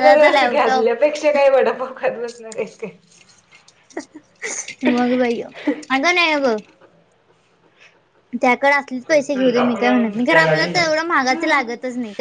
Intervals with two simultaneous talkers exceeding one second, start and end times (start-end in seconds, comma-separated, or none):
9.3-11.7